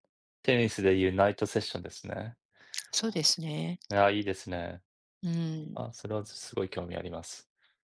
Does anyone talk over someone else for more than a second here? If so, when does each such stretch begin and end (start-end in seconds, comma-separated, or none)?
none